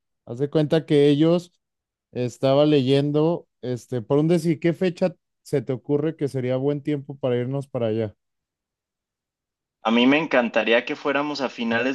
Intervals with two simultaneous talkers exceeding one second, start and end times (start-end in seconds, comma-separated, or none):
none